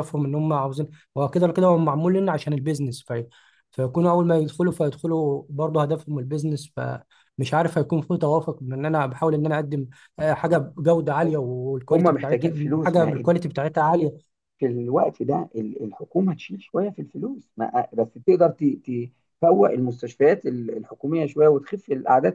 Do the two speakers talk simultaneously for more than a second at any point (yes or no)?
yes